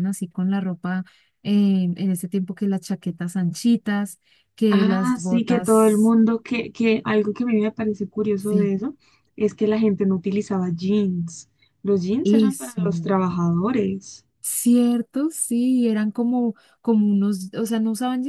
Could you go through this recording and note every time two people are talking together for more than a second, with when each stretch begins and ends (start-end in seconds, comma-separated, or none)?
4.7-6.1